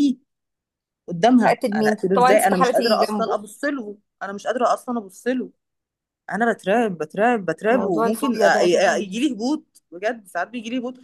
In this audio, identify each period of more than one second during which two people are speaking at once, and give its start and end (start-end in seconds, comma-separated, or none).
1.5-3.4